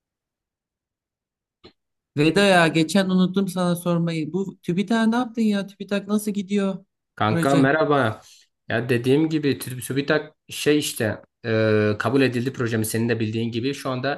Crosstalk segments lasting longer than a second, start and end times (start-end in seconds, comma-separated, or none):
none